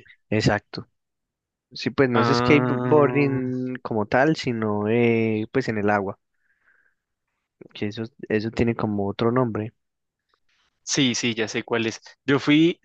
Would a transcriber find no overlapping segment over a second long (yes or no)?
no